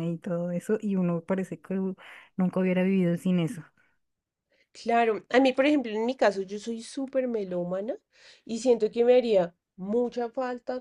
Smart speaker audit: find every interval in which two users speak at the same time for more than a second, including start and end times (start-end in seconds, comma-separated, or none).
none